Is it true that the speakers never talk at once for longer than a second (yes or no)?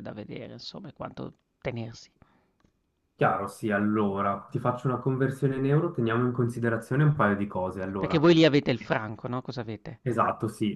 yes